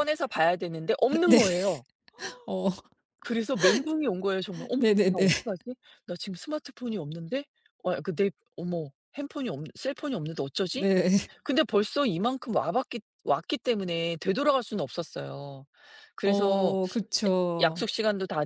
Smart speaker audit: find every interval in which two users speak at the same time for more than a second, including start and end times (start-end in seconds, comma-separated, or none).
none